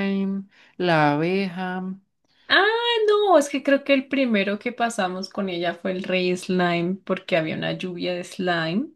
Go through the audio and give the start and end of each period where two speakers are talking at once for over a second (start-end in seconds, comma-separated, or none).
none